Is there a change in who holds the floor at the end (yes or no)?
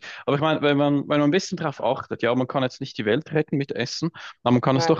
no